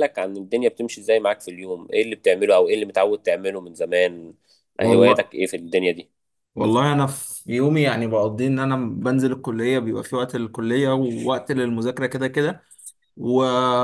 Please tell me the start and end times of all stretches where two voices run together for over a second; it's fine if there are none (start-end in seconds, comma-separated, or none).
none